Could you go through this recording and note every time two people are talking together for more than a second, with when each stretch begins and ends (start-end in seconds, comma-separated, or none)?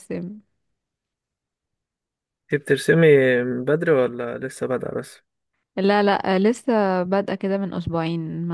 none